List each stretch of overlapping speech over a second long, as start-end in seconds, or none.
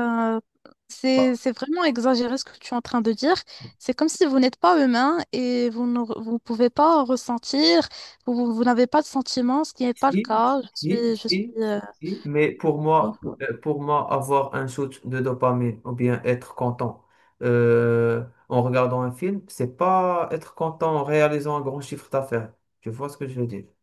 9.9-11.6